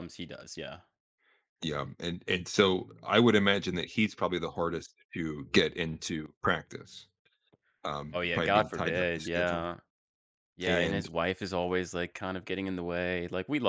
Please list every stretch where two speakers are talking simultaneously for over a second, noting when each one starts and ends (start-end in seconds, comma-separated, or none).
8.1-9.7